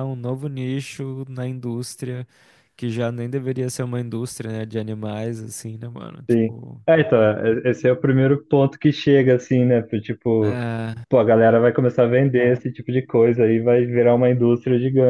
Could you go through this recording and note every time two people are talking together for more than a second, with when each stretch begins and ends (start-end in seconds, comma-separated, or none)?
none